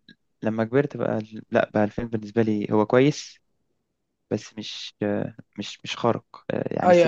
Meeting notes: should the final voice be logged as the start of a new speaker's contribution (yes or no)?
yes